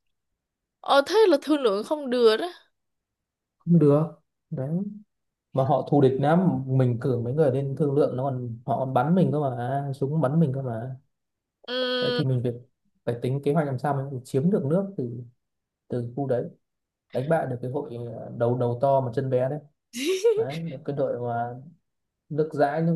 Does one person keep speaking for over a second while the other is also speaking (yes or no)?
no